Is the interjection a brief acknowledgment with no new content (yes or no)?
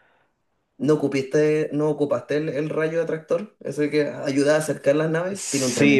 no